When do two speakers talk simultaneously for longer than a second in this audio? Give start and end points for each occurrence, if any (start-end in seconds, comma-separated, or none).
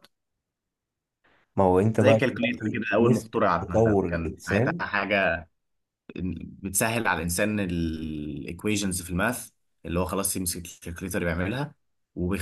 2.0-4.8